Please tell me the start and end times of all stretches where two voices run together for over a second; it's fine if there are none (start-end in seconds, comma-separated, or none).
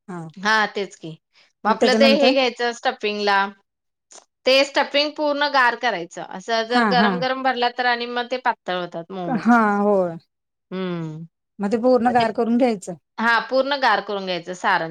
none